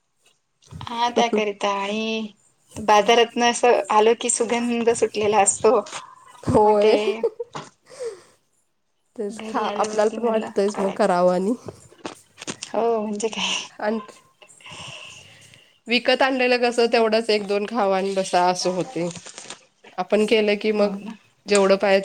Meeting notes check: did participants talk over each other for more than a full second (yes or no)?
yes